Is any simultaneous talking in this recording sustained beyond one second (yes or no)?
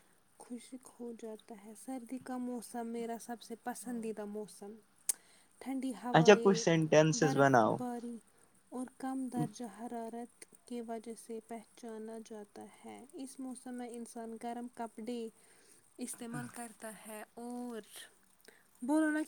yes